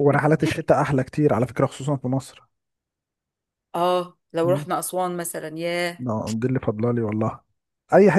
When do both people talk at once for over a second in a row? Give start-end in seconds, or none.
none